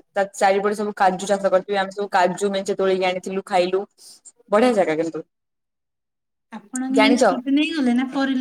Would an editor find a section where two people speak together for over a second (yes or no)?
no